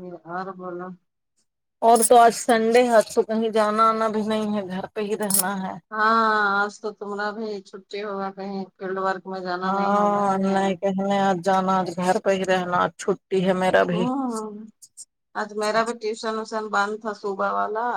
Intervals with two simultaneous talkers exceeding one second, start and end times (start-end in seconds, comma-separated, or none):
none